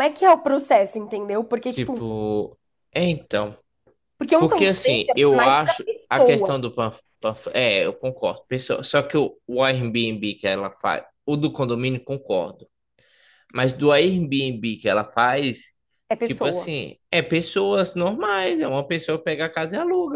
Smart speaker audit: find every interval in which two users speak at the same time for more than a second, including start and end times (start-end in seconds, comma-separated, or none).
4.4-6.5